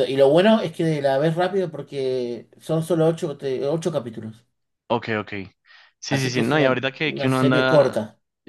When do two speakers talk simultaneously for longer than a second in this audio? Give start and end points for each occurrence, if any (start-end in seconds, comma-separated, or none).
6.1-8.0